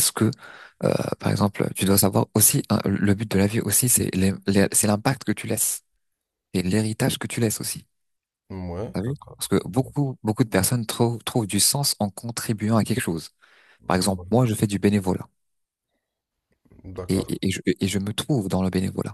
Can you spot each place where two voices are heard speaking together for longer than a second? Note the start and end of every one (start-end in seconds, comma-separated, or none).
none